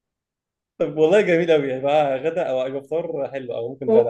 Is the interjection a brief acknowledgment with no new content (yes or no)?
no